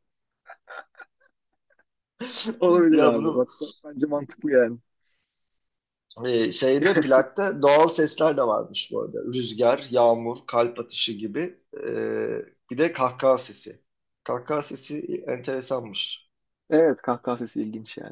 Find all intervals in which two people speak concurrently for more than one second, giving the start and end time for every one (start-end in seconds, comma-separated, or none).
none